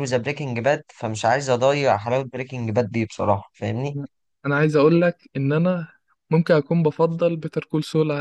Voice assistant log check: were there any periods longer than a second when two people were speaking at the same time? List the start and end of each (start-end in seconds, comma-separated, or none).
none